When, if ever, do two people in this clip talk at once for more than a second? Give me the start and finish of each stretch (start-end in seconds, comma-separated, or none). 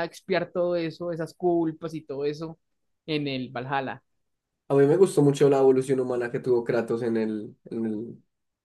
none